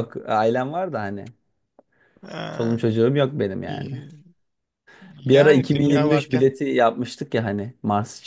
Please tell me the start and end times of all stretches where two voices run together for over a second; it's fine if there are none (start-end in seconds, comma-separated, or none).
5.2-6.5